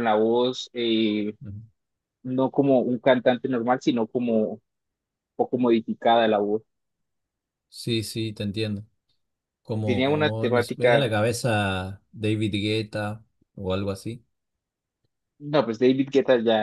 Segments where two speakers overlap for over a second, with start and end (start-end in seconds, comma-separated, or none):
9.8-11.1